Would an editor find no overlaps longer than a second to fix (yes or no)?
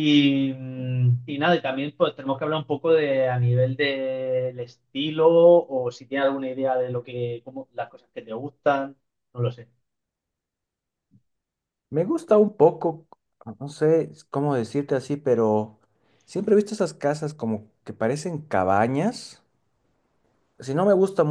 yes